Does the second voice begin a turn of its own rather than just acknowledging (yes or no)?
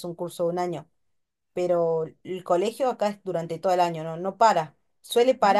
no